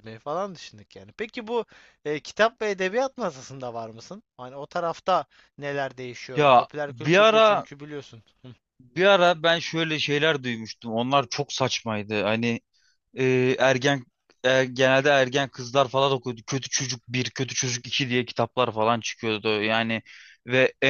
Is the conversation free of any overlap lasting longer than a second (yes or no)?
no